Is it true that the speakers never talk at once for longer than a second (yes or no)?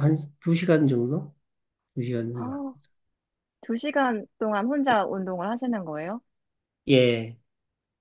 yes